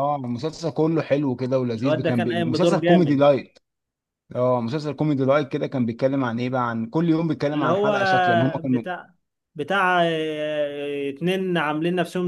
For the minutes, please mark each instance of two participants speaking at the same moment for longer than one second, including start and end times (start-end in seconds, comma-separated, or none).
1.8-3.2